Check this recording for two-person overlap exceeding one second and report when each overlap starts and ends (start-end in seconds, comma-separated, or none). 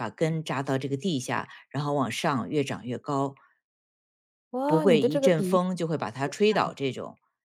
4.7-6.7